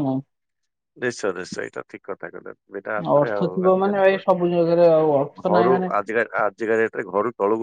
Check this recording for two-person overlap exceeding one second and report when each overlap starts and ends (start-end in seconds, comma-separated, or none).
3.2-5.9